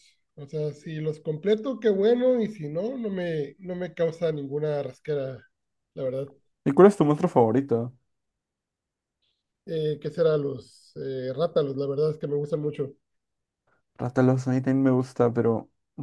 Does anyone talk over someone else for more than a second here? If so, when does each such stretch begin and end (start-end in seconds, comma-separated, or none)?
none